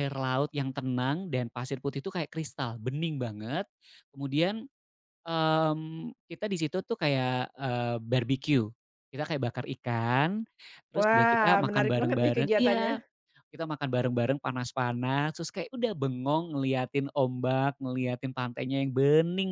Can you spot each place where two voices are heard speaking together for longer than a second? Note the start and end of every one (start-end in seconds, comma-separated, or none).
11.0-12.9